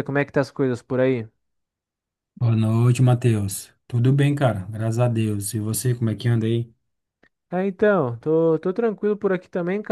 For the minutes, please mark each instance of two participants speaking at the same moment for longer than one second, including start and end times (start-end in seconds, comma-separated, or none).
none